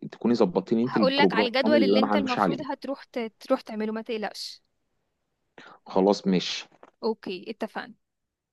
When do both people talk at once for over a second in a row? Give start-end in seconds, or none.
0.9-2.6